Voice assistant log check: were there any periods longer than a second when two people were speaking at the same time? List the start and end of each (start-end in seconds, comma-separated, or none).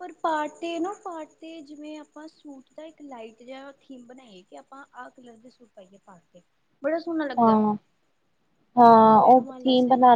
none